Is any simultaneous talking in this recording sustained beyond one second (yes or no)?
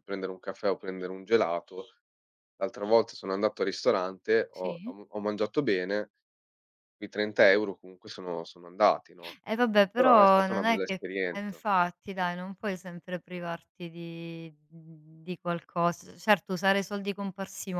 yes